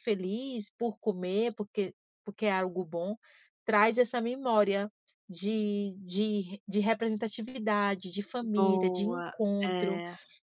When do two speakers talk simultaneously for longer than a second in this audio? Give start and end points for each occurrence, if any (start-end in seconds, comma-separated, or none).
8.5-10.0